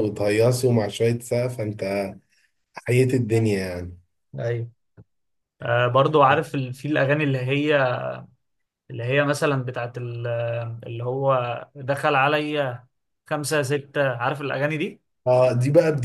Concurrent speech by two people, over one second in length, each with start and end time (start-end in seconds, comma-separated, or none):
none